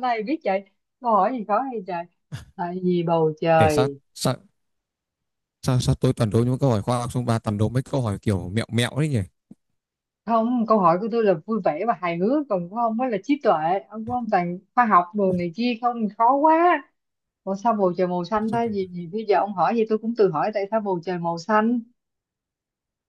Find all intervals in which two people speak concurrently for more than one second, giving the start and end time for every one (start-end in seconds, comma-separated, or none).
none